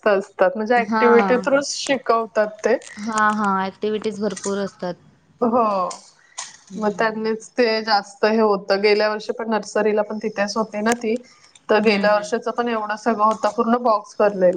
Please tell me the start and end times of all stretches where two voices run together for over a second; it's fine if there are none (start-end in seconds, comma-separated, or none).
none